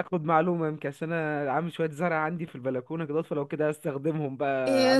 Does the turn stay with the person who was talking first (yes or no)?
no